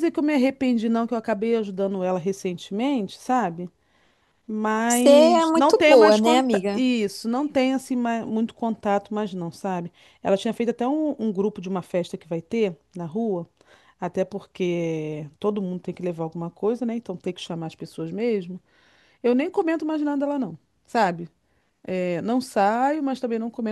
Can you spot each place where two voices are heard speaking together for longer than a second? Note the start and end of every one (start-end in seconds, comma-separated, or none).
4.9-6.8